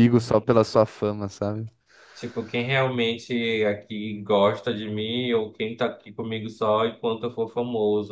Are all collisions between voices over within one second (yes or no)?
yes